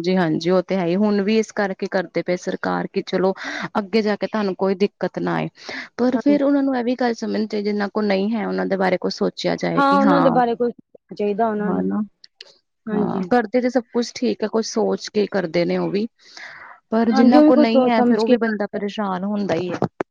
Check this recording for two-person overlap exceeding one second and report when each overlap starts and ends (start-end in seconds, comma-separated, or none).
17.1-18.6